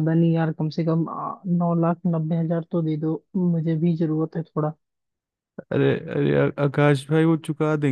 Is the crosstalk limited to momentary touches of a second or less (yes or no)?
yes